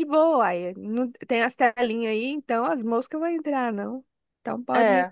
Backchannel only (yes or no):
yes